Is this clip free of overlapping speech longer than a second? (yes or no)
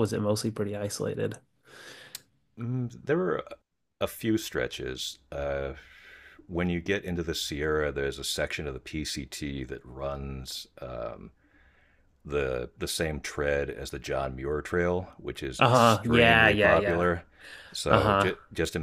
no